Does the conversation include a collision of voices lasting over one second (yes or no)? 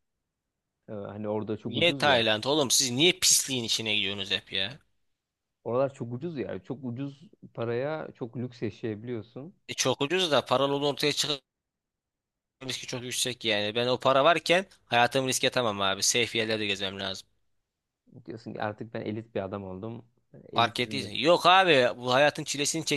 no